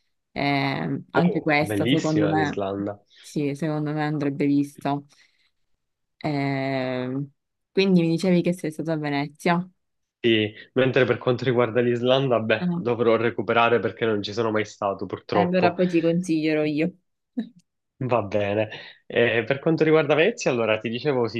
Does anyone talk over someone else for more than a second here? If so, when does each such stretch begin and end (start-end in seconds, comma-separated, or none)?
1.1-2.6